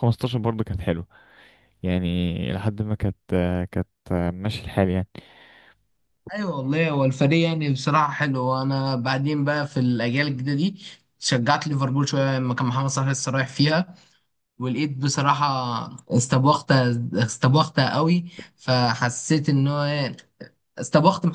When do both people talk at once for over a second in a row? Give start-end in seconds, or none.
none